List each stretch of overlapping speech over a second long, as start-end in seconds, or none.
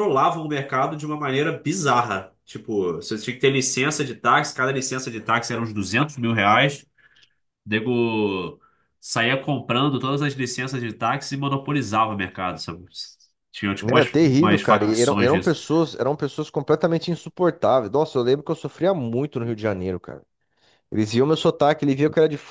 13.8-15.6